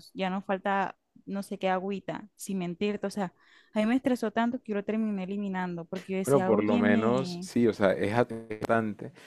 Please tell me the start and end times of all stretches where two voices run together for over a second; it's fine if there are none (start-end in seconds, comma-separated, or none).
6.2-7.5